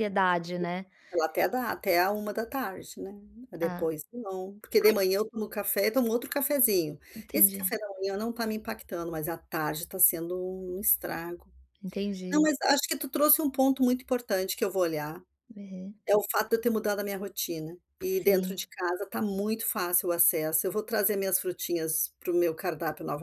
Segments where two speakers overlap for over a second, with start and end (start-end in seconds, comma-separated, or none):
none